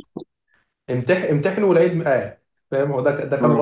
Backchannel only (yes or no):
yes